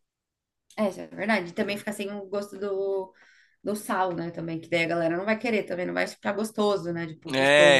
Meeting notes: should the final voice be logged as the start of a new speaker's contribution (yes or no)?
yes